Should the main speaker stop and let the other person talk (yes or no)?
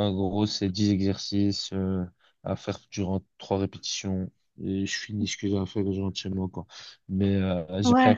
no